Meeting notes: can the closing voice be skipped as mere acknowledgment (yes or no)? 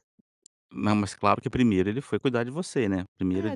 no